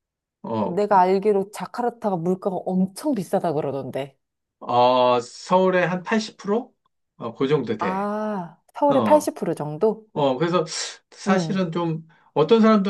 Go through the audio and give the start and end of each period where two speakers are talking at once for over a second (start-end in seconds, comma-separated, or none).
none